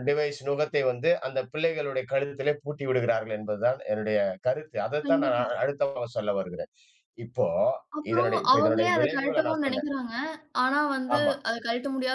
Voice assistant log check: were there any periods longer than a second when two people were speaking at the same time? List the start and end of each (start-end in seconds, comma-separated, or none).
8.1-9.9